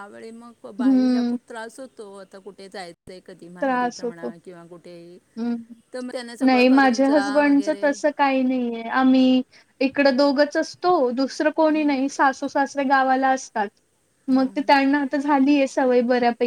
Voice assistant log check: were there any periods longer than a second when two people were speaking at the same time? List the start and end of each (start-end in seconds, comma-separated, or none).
6.5-7.8